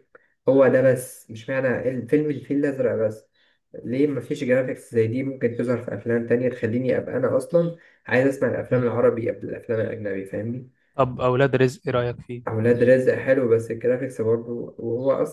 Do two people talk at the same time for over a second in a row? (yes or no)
no